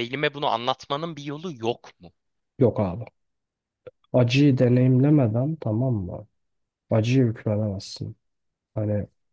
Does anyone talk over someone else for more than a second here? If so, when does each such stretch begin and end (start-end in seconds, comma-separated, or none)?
none